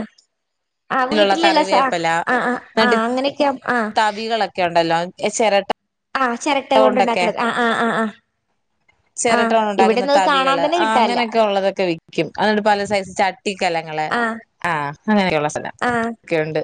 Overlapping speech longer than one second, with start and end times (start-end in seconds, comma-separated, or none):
9.4-11.2